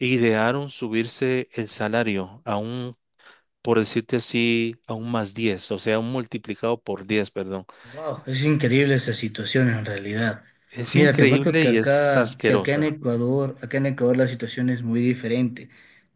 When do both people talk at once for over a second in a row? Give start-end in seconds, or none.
10.9-12.9